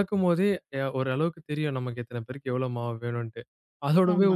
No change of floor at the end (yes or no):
yes